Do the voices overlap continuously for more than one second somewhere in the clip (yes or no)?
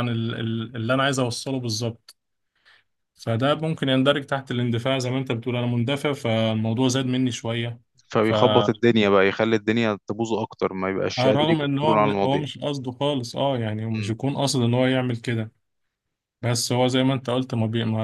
yes